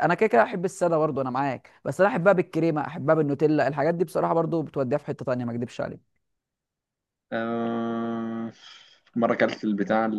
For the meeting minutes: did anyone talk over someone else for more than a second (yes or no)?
no